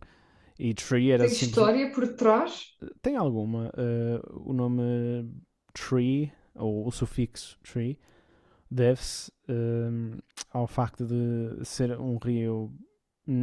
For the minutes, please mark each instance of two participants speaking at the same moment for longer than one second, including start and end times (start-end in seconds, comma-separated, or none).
none